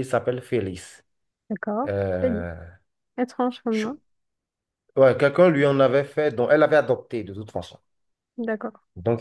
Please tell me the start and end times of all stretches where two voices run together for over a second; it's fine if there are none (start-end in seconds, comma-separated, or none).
none